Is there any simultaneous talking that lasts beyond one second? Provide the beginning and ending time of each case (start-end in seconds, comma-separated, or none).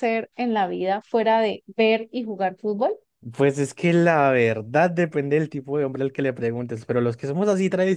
none